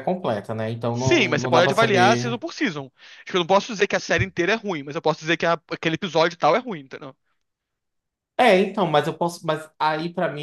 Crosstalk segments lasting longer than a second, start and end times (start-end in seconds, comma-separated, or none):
0.9-2.4